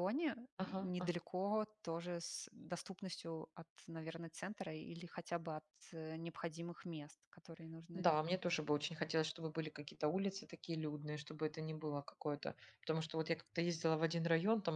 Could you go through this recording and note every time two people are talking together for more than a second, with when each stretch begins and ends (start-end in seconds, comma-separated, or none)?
none